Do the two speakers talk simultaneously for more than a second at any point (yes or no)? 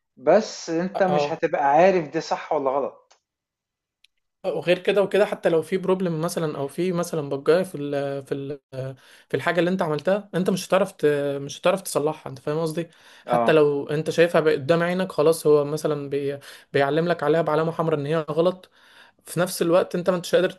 no